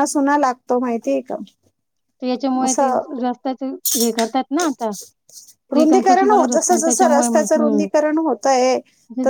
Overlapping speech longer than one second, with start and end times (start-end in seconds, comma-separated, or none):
5.8-7.9